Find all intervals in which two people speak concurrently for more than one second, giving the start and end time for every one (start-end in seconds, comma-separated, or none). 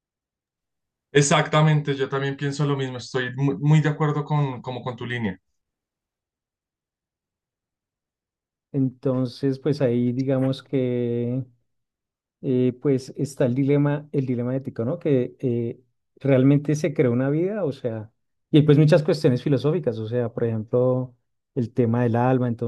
none